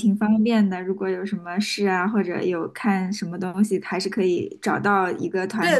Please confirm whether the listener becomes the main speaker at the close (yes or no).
yes